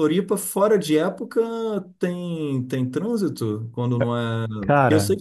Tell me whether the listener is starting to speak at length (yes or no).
no